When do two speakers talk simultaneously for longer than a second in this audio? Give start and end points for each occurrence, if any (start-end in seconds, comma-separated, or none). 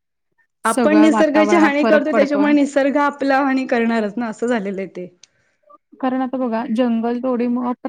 0.7-2.5